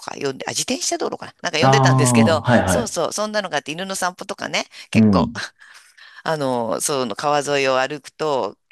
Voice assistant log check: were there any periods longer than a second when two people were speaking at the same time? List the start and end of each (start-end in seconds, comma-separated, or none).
1.6-3.0